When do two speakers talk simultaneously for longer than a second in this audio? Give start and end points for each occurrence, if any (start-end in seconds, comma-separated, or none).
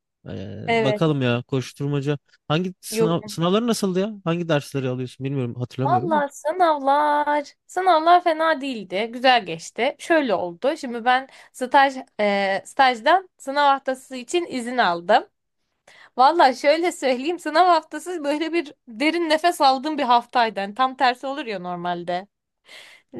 none